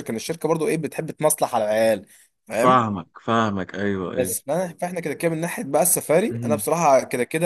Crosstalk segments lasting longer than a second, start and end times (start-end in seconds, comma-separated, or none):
none